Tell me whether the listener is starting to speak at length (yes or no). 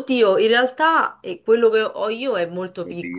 yes